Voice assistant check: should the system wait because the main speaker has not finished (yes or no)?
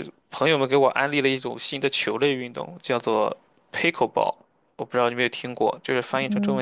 no